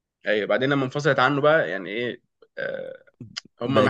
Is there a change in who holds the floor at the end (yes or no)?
no